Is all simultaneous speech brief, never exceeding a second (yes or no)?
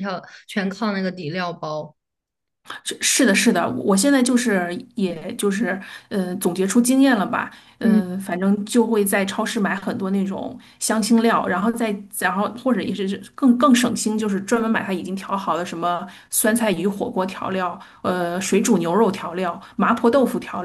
yes